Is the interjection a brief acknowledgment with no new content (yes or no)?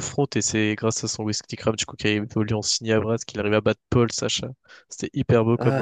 no